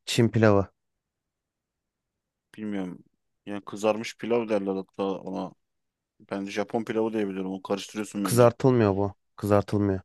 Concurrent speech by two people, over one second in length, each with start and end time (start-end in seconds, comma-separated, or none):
none